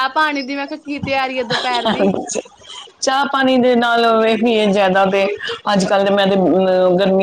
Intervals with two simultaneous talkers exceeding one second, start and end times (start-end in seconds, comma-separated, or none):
none